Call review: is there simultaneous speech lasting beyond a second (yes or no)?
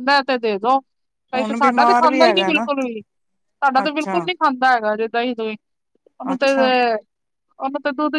yes